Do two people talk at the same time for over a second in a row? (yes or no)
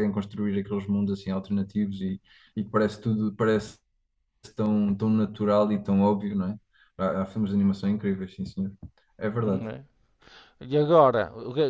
no